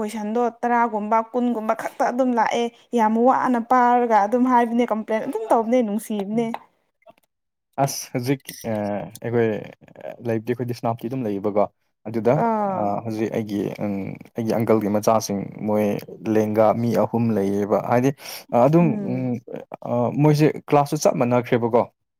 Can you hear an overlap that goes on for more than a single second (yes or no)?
no